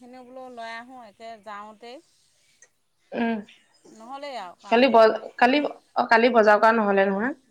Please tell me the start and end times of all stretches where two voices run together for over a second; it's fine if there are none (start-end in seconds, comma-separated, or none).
none